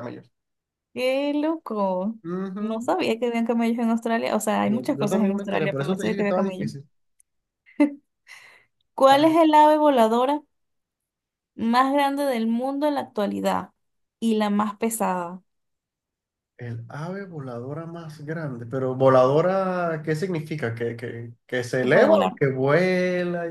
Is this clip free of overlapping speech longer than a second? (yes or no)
no